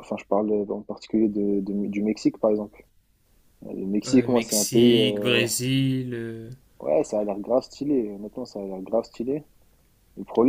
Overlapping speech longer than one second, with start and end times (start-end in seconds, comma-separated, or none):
4.1-5.5